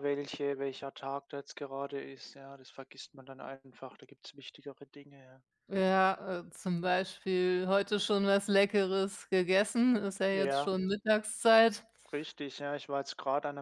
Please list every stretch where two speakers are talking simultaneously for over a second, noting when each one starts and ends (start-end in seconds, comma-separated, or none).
none